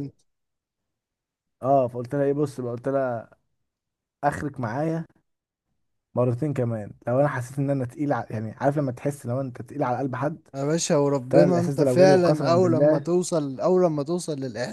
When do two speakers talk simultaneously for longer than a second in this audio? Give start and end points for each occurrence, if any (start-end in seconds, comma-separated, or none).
11.3-13.1